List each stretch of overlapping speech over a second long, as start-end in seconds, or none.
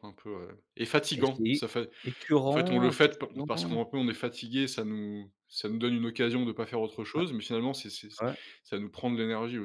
2.5-3.8